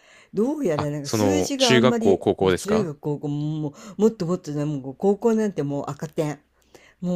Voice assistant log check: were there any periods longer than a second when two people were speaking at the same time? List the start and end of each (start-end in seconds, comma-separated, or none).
0.8-2.9